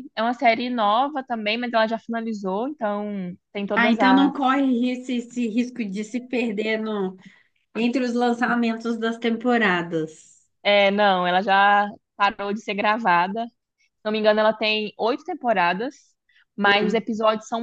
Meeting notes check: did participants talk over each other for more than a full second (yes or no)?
no